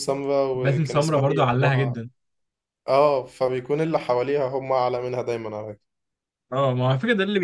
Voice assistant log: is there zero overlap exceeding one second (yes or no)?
no